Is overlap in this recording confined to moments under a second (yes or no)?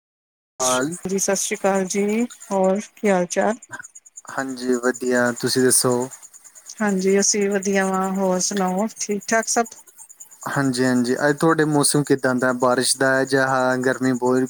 yes